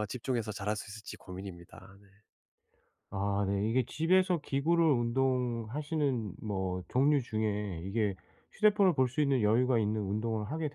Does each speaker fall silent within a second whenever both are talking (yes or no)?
yes